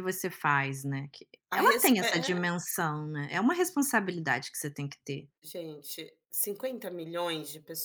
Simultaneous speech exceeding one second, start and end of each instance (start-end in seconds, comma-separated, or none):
none